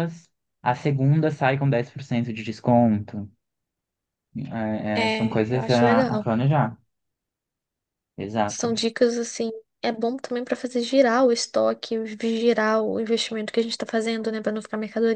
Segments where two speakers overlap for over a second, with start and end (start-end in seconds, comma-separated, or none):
5.0-6.4